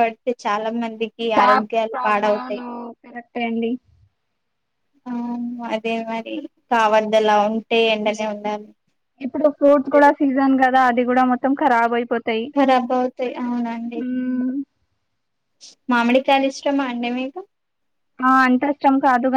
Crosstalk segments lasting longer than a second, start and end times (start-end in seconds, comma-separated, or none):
none